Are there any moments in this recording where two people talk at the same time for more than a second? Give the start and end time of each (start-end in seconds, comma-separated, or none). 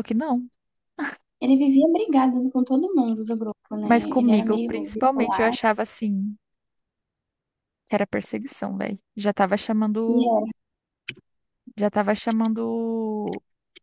3.8-5.5